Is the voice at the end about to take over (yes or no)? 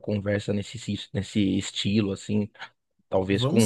no